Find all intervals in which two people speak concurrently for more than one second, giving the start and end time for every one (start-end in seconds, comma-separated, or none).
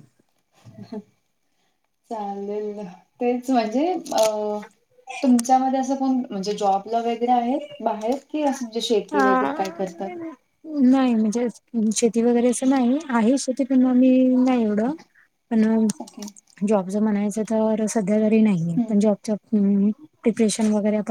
none